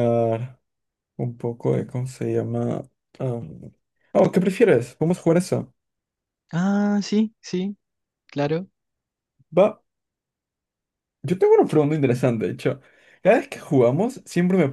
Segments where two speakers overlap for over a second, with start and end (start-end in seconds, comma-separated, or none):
none